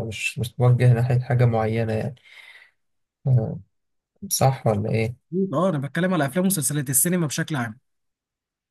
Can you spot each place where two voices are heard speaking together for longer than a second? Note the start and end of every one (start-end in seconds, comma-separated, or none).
none